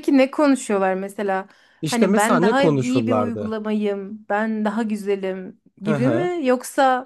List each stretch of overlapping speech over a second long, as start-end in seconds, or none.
1.8-3.6